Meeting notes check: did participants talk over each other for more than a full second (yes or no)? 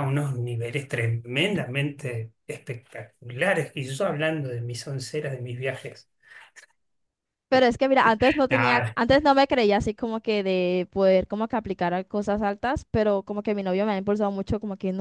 no